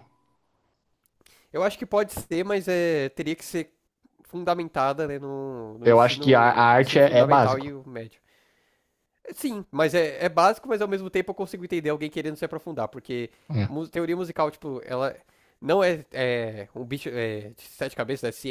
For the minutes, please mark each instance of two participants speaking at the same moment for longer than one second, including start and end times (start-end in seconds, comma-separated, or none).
5.8-7.7